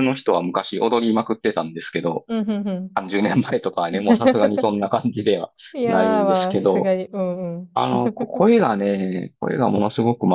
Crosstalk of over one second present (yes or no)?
yes